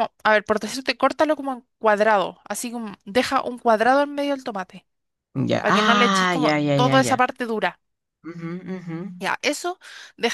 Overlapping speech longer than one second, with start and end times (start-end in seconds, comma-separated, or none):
5.6-7.1